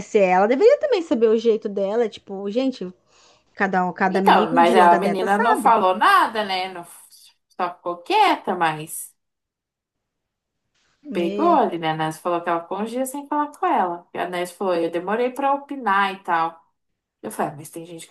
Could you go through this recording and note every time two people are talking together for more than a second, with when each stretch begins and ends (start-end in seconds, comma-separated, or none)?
4.1-5.8